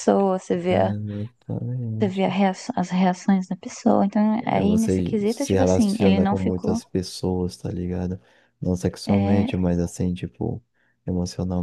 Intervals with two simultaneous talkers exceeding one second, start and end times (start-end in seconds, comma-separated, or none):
4.4-6.8